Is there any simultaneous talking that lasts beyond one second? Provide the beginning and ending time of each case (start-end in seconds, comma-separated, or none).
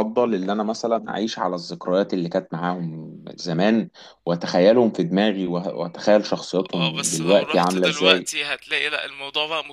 6.7-8.3